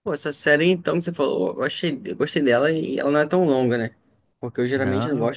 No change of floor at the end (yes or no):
yes